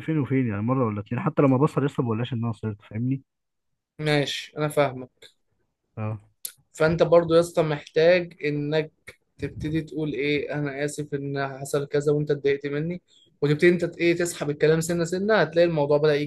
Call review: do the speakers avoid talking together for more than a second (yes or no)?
yes